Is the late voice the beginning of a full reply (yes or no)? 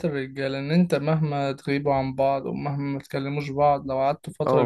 yes